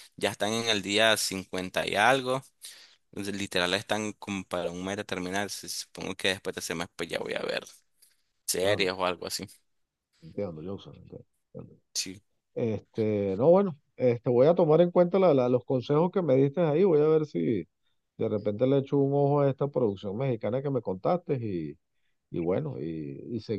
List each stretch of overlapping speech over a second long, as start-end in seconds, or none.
none